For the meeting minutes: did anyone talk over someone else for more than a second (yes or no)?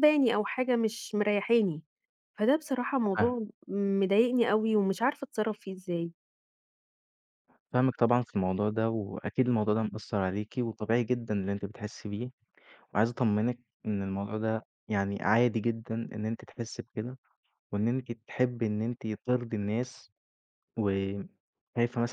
no